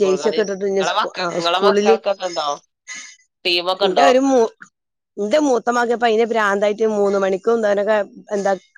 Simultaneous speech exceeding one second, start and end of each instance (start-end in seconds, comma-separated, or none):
none